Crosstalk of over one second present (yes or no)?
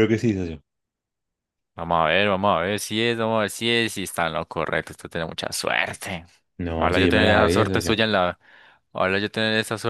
yes